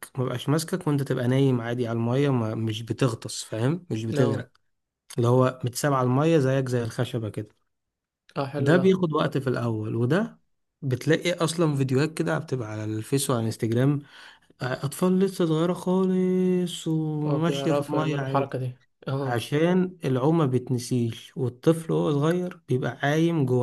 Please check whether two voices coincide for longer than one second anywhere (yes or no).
yes